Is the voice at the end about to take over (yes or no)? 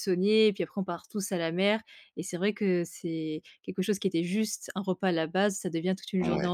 no